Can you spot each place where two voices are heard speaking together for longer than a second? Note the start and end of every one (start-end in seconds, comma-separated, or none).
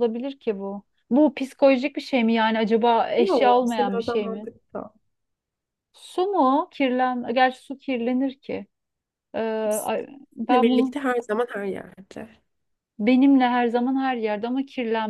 3.2-4.5